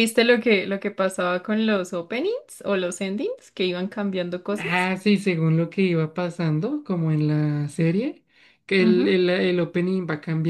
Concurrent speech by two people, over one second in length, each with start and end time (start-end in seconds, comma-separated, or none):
none